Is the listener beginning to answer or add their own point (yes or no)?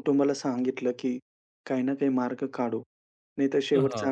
no